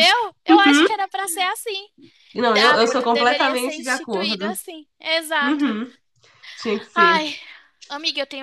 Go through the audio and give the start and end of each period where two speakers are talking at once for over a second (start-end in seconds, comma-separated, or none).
2.4-4.5